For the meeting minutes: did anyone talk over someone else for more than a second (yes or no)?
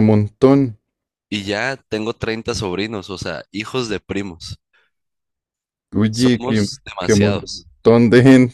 yes